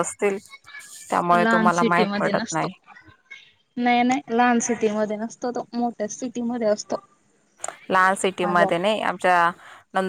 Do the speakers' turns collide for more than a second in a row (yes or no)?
yes